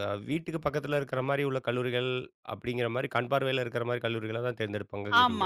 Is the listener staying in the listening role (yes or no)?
no